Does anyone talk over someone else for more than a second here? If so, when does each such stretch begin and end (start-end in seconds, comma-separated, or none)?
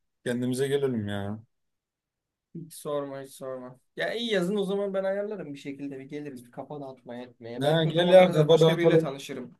7.6-9.1